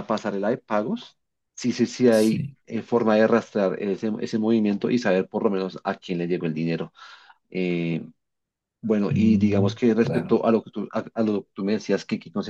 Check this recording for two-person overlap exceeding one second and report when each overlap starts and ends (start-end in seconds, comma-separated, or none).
9.1-10.4